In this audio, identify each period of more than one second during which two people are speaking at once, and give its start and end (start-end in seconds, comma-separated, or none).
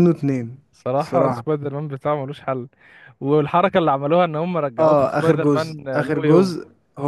4.8-6.6